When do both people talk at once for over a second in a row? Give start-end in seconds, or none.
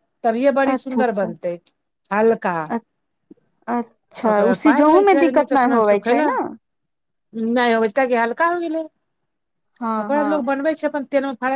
4.3-6.3